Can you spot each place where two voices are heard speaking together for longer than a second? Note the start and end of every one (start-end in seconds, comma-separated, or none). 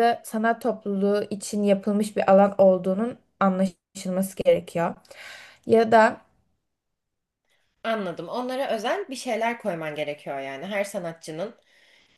none